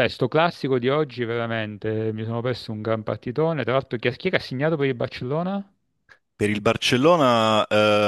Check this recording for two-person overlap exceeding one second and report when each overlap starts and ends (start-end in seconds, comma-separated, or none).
none